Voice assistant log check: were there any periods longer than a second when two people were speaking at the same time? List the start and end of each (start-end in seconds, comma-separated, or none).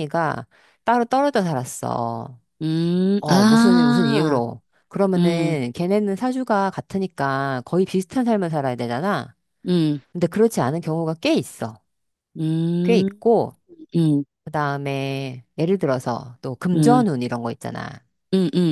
3.2-4.4